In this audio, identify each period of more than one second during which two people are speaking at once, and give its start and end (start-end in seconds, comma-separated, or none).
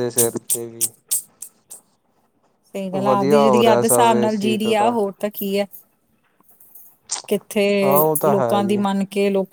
3.0-4.8